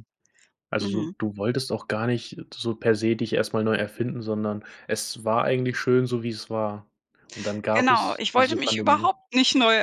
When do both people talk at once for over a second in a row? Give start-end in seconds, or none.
7.7-9.1